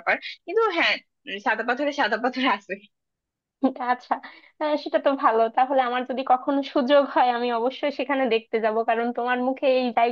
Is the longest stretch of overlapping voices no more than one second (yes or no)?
yes